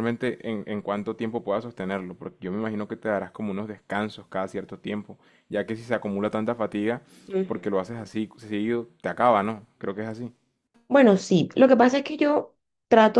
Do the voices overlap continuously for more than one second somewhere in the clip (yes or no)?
no